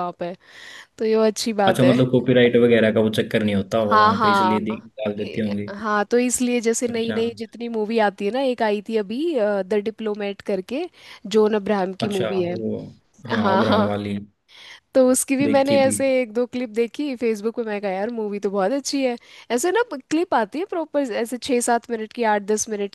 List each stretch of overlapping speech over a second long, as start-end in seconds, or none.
3.8-5.7